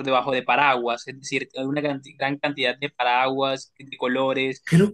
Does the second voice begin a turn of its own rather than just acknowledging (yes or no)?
no